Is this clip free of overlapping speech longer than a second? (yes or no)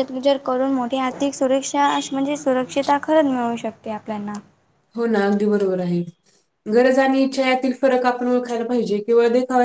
yes